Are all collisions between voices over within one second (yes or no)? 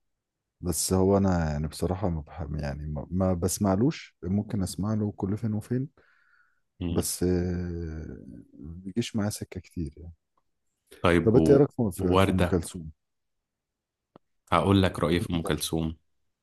no